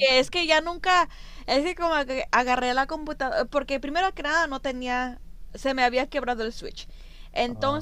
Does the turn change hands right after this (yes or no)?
no